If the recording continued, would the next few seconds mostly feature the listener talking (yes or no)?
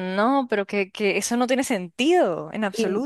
yes